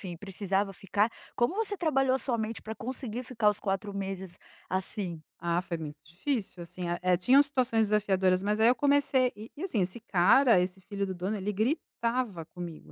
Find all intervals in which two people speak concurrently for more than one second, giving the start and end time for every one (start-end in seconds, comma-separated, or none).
none